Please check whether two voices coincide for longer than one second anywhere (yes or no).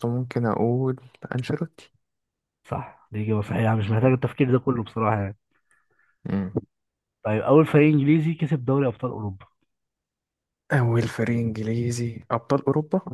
no